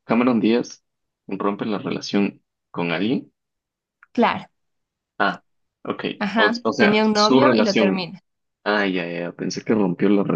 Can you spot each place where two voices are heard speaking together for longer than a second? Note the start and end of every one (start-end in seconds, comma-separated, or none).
6.2-8.1